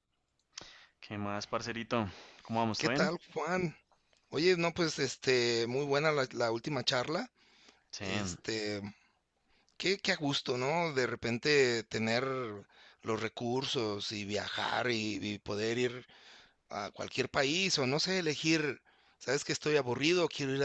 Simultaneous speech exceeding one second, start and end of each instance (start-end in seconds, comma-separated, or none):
none